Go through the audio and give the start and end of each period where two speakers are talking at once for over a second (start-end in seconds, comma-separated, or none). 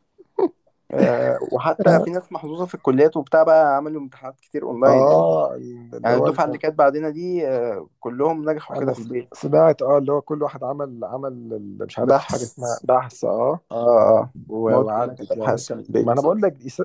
14.7-16.2